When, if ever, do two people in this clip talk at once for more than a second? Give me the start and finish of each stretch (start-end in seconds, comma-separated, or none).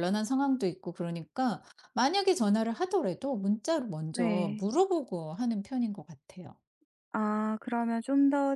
none